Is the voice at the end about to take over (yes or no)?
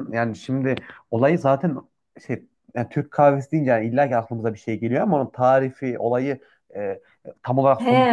yes